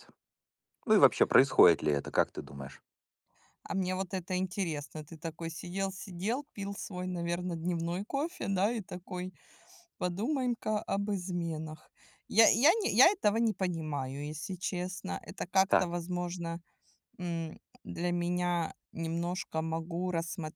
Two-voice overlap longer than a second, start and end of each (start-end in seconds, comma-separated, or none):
none